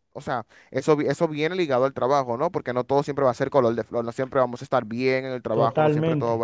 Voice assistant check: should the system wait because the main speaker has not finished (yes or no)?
yes